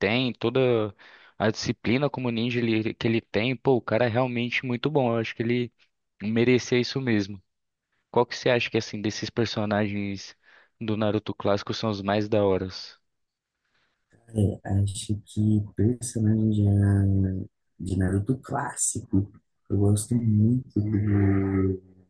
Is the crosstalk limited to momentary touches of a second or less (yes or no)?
yes